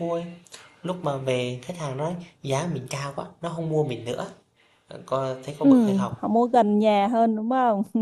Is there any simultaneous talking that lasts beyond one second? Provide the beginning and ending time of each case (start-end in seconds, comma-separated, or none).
none